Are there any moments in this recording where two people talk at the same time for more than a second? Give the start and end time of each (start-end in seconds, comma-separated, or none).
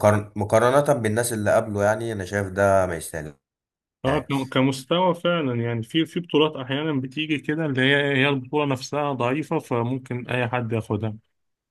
none